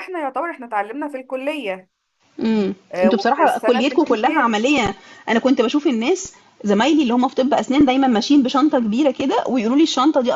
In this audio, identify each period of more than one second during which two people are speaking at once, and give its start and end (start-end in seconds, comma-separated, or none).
2.9-4.5